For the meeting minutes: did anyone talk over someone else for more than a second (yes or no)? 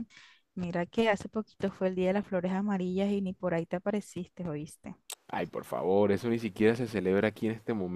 no